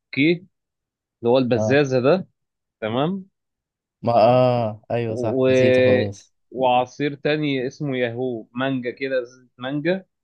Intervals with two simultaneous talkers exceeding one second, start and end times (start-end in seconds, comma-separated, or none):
none